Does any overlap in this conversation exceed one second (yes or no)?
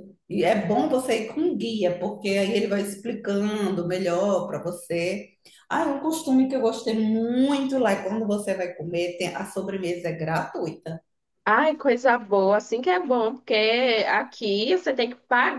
no